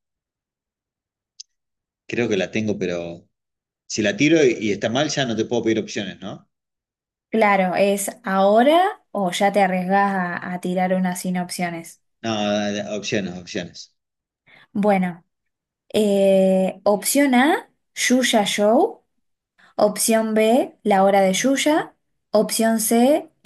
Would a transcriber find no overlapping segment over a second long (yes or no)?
yes